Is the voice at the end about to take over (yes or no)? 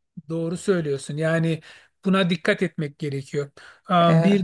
no